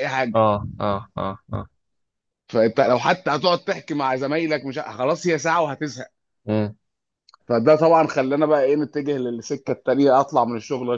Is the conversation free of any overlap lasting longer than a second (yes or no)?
yes